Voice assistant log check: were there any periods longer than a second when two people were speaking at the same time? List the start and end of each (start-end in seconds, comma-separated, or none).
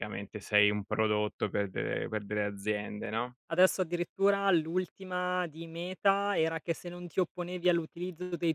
none